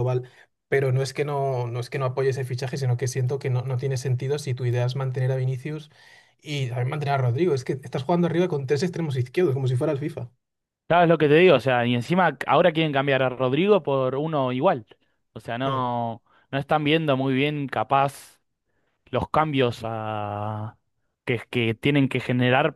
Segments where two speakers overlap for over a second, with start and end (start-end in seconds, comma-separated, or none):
none